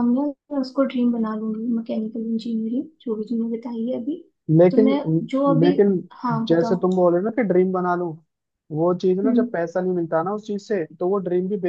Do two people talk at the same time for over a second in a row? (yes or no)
no